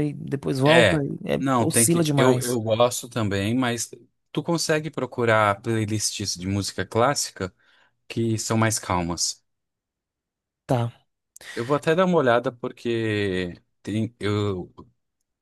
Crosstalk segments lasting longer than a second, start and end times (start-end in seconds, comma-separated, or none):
0.7-2.6